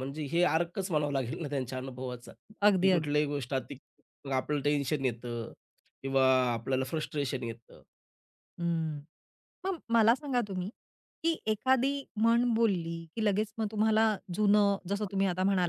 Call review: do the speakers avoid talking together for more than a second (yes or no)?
yes